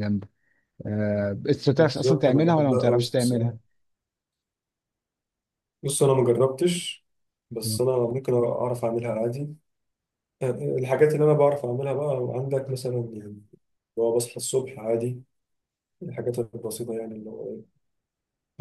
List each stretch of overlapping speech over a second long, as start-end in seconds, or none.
1.7-3.5